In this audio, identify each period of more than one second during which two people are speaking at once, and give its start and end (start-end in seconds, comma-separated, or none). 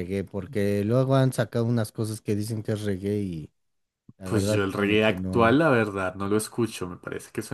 4.2-5.6